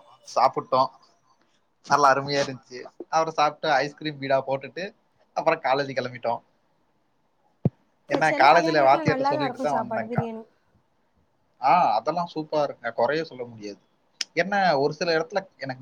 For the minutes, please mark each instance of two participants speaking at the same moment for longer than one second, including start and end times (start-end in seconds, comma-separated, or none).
8.1-10.2